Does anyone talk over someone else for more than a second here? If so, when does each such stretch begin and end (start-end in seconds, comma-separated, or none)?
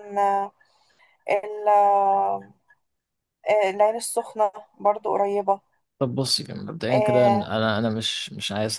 none